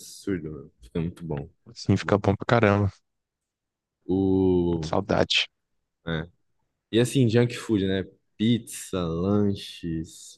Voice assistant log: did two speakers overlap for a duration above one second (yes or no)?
no